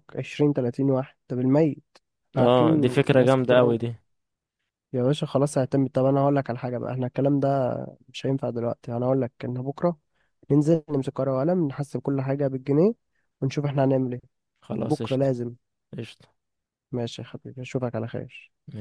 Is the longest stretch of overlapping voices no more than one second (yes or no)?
no